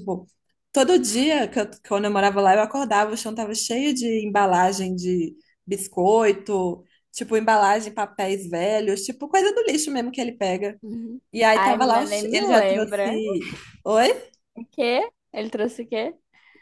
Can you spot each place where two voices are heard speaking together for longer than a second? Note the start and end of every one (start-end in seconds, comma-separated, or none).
11.3-13.2